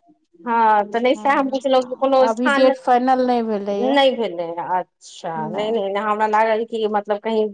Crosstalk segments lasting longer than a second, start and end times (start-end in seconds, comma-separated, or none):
1.1-2.8